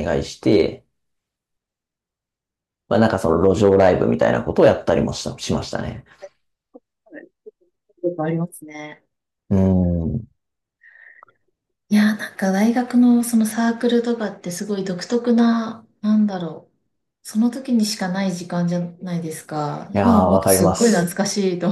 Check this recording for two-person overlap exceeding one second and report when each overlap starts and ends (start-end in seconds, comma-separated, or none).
19.9-21.1